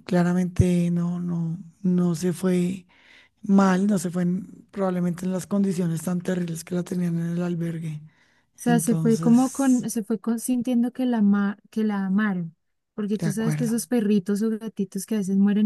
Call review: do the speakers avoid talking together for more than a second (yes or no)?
no